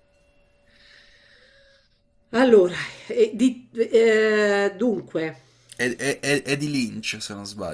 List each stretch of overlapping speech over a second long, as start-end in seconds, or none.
none